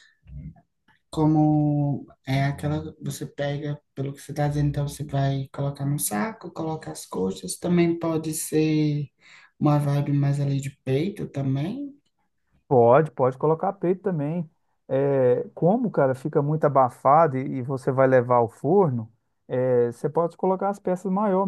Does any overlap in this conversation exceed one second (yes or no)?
no